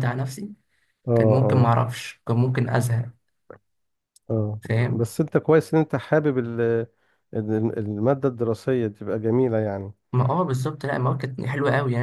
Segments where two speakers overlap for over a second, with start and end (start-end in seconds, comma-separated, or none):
none